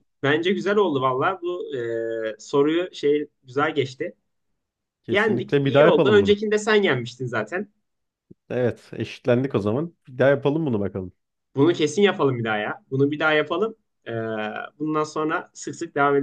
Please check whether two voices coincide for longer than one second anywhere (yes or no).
yes